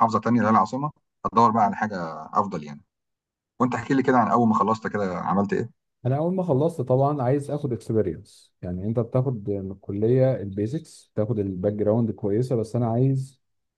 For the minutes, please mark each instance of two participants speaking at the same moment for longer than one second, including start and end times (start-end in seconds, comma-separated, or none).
none